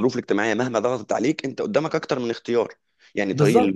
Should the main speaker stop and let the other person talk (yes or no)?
no